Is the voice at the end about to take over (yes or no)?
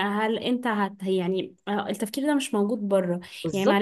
no